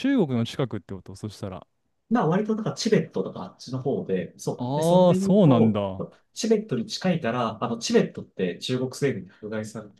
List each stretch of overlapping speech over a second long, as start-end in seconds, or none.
4.6-5.8